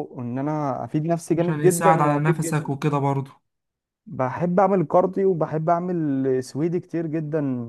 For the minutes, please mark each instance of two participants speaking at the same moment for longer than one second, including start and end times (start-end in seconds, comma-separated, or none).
1.4-2.8